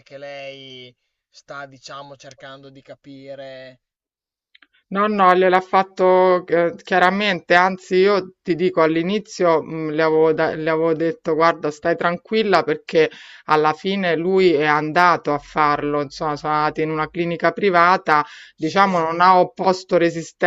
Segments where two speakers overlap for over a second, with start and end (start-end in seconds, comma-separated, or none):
none